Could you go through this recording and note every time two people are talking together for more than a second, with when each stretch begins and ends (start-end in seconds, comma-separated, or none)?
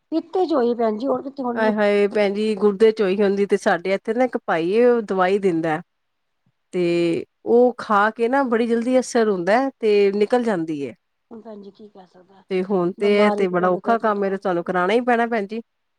none